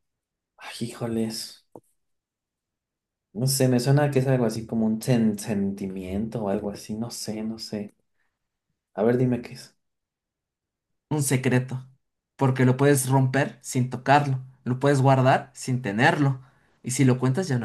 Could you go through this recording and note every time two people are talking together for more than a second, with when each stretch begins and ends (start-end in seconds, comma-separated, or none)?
none